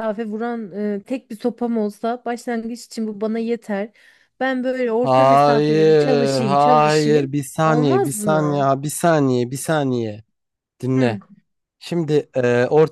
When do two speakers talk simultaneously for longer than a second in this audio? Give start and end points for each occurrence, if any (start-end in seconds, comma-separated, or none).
5.0-8.7